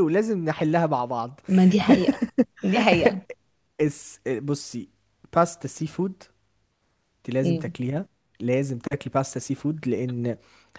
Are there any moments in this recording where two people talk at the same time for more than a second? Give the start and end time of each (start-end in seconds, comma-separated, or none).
none